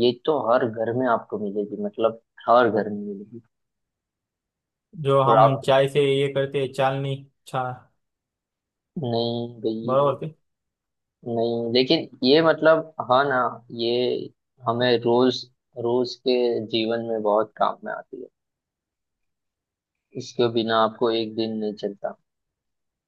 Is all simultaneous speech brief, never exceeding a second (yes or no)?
yes